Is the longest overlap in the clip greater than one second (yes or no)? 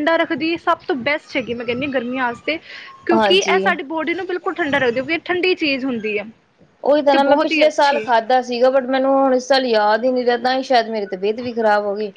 no